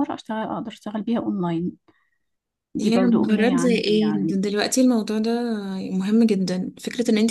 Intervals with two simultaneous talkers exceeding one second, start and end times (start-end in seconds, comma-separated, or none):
2.8-4.3